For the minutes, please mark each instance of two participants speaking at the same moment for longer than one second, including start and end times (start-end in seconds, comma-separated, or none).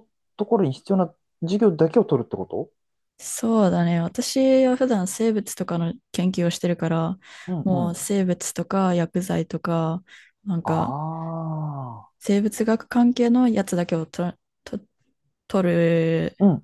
none